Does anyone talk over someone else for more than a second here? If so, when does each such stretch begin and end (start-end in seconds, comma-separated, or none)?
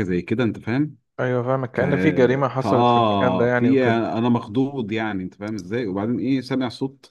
2.6-4.0